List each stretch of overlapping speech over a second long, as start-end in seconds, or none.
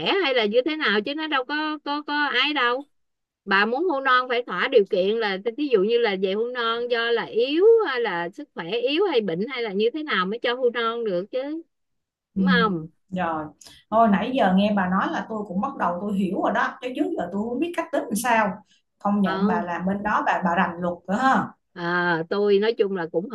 none